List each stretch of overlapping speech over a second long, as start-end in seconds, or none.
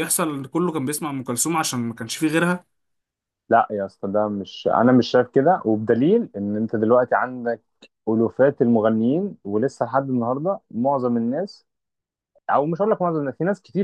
none